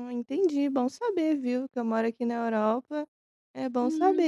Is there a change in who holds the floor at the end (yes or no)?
no